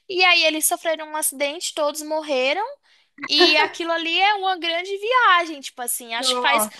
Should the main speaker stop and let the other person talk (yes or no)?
no